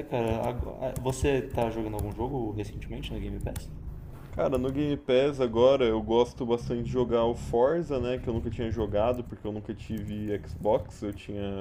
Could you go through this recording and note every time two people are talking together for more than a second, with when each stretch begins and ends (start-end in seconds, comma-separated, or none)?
none